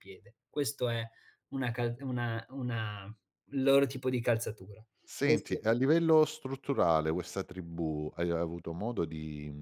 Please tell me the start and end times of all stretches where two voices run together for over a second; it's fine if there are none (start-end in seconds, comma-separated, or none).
none